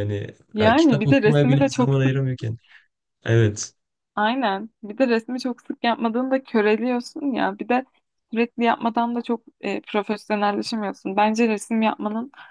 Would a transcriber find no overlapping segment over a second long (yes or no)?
no